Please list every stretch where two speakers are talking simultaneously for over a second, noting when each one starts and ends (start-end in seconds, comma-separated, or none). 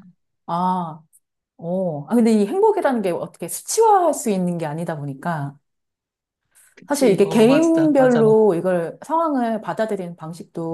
6.9-8.4